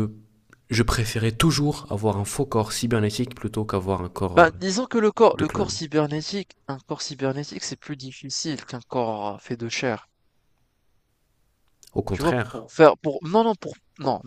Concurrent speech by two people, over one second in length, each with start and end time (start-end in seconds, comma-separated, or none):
none